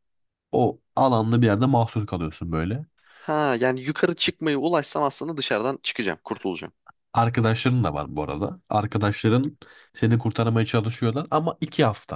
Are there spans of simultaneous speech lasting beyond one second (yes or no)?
no